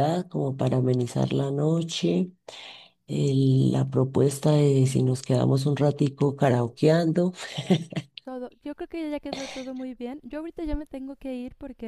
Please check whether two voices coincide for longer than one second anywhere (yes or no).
no